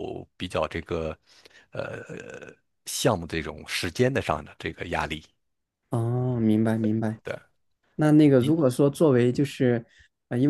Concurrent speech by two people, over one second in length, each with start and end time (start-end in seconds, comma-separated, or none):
none